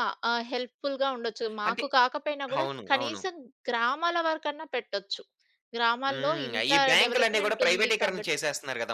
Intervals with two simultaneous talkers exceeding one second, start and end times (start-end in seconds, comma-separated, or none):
6.1-8.3